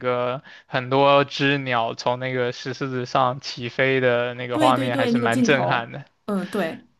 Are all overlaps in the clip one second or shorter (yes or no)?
no